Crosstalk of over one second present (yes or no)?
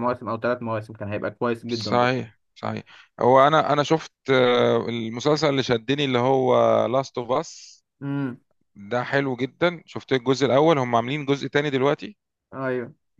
no